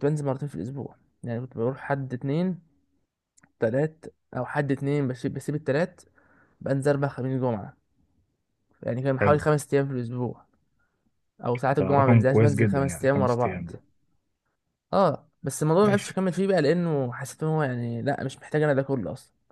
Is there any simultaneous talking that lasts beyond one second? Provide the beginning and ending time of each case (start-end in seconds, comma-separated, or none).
11.8-13.6